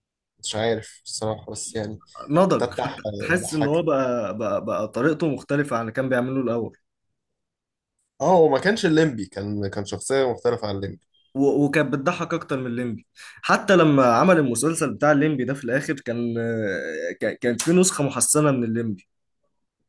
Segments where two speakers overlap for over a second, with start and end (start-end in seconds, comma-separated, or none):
2.6-3.9